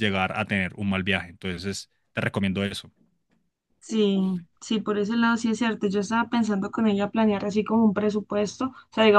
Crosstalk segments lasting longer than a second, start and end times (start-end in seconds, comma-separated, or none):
none